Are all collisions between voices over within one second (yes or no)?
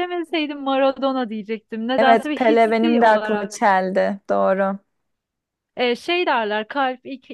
no